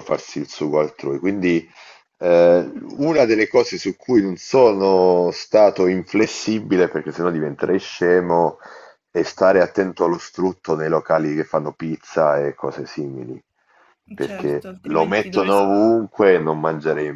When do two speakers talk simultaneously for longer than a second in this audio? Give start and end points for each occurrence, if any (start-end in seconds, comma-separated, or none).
14.2-15.8